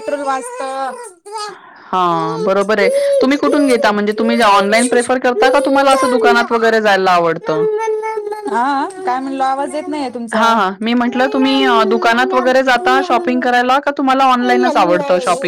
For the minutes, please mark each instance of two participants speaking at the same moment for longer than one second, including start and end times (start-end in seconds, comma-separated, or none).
none